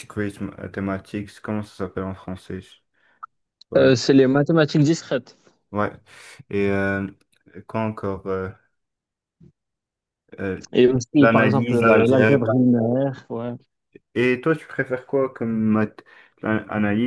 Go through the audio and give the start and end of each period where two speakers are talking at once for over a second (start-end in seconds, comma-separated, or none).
11.2-12.5